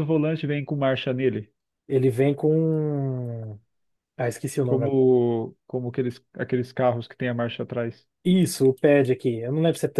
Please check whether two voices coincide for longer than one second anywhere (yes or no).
no